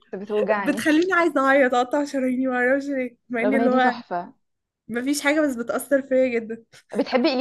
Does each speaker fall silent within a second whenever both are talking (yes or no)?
yes